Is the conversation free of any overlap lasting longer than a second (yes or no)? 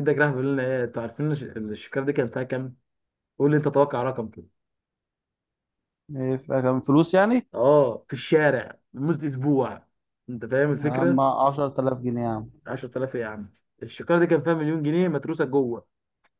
yes